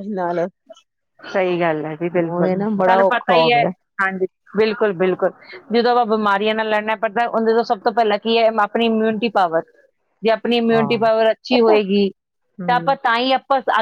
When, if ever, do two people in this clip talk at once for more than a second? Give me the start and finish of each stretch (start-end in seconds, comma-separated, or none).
2.1-3.6